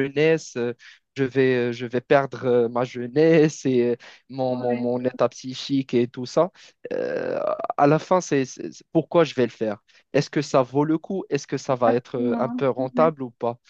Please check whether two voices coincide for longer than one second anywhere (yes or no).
yes